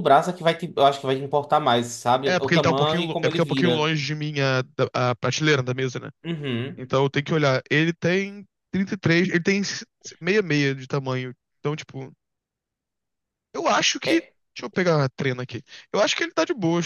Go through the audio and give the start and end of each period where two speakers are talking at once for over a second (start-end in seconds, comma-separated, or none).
2.2-3.9